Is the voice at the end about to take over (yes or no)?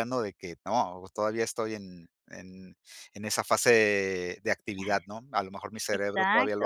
yes